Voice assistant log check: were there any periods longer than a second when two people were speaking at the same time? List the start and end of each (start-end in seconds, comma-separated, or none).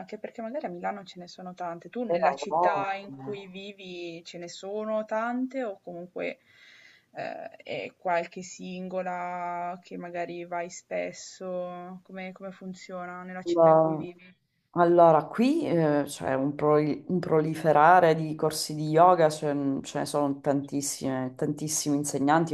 2.1-3.4